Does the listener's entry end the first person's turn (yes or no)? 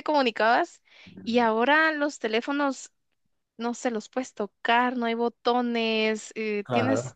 no